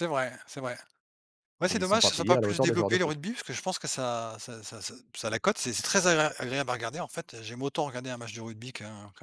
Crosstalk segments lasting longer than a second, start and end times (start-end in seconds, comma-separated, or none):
1.7-3.2